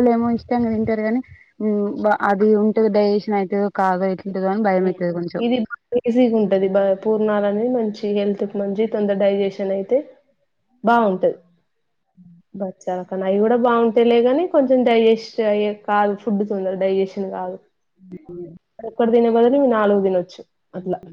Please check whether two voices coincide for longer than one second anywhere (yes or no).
no